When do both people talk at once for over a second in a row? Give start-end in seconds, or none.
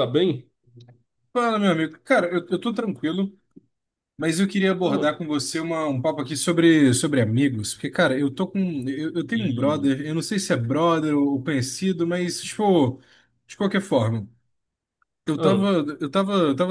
none